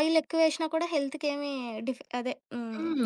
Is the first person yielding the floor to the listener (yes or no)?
yes